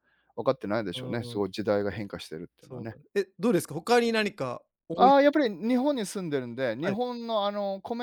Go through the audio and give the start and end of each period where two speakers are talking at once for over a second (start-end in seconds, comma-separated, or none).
none